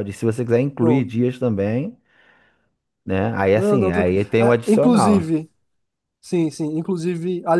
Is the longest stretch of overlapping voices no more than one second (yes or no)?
no